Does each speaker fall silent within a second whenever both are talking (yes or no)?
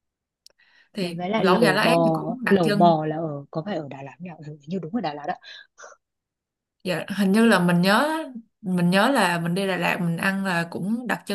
no